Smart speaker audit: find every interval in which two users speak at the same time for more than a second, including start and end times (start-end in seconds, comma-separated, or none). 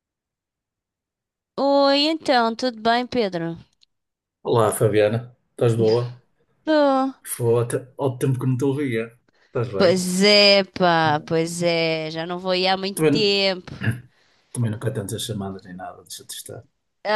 none